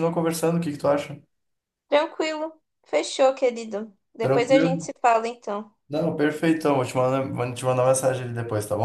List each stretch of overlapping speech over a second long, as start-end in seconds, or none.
none